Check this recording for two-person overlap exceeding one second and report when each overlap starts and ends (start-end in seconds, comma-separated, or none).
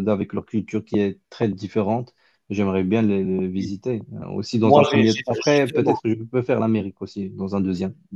4.6-6.0